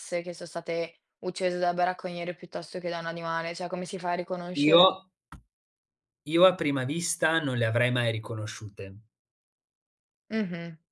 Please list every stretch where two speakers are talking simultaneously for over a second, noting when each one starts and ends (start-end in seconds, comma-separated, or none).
none